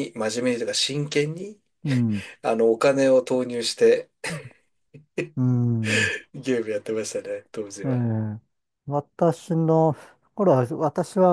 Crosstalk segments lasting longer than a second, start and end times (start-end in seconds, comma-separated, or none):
none